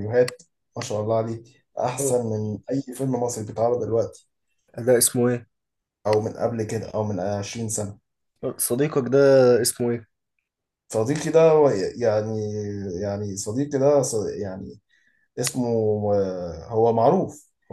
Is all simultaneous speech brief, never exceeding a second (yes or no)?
yes